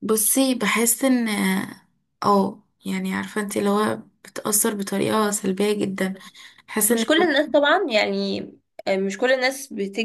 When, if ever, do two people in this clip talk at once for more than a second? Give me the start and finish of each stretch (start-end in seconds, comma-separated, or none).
none